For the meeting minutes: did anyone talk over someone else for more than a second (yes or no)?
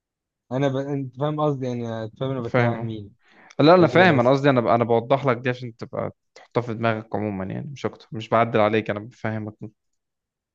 no